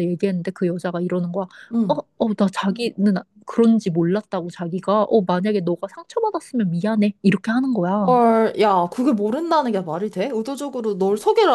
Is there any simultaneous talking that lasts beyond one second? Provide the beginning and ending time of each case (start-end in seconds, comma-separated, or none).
none